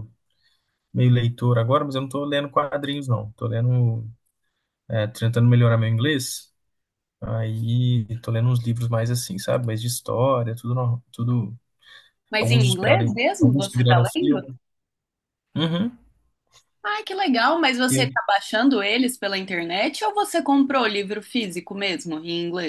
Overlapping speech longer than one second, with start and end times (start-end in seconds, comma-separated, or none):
12.4-14.4